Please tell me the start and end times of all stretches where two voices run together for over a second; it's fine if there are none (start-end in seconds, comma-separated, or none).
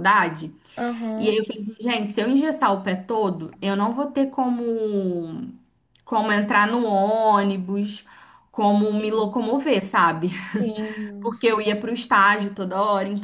none